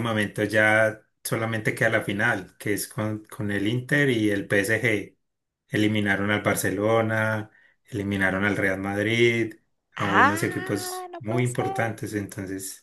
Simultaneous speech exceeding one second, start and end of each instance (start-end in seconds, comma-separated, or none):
10.0-11.9